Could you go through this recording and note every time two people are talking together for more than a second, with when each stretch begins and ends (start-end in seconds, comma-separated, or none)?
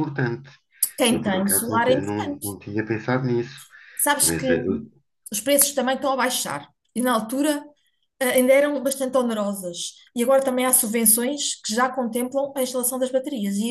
1.1-2.5